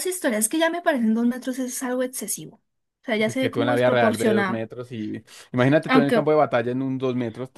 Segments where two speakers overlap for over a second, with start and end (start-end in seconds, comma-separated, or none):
3.2-4.6